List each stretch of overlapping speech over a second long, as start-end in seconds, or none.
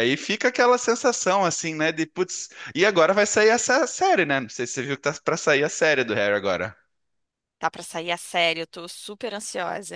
none